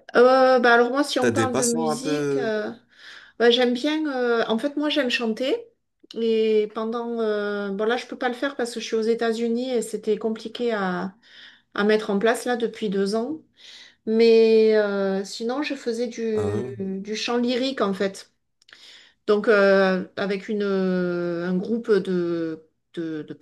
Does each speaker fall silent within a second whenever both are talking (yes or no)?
no